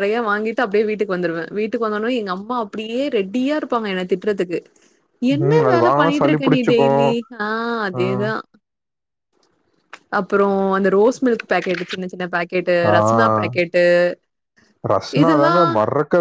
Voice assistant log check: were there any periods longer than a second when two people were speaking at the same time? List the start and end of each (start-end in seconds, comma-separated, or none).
none